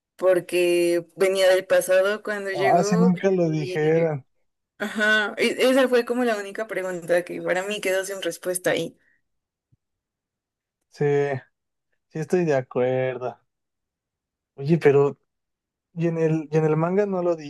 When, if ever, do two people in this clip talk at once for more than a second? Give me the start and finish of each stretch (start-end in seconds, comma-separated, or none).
2.5-3.9